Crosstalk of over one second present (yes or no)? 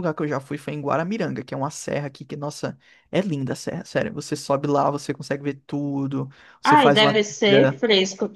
yes